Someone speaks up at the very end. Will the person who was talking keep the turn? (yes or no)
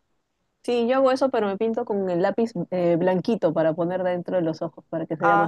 no